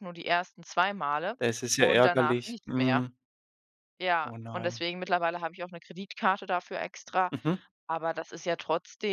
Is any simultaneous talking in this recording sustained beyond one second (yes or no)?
yes